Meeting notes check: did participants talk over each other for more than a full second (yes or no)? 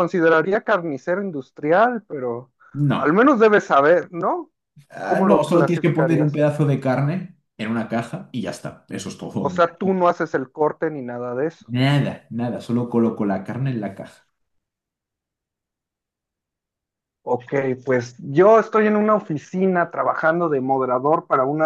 yes